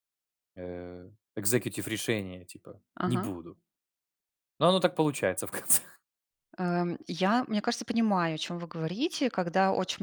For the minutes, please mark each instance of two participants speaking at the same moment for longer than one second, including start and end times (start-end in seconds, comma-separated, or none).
none